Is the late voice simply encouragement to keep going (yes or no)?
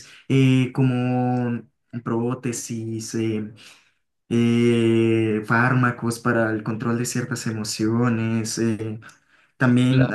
yes